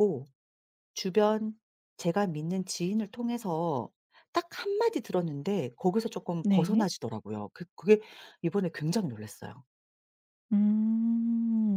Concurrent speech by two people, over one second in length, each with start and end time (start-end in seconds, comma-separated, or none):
none